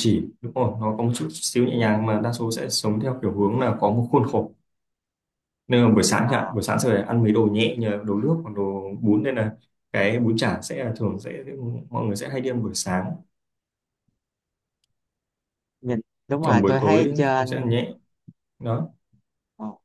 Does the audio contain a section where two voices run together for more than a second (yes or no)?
yes